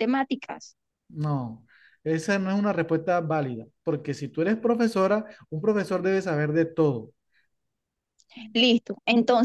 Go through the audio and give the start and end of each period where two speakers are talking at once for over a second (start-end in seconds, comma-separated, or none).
none